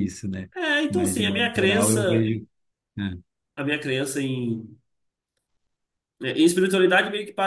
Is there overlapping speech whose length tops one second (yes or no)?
yes